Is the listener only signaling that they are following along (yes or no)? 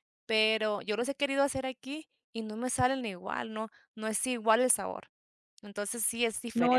no